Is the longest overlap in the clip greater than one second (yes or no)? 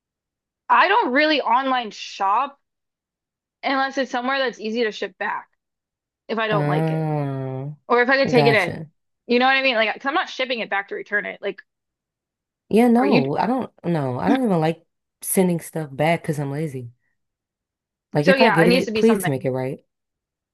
yes